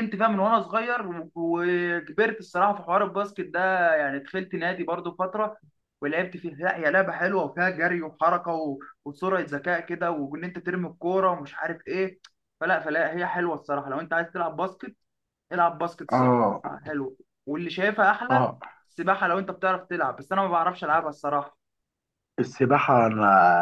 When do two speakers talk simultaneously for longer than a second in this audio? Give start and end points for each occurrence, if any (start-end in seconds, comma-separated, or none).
none